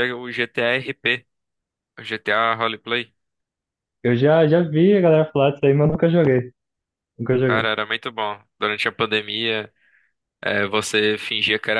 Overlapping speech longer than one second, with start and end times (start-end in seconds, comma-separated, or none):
none